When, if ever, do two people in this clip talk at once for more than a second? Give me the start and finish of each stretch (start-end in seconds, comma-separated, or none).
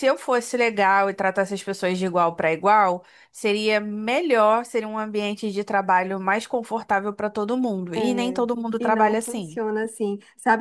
7.9-9.6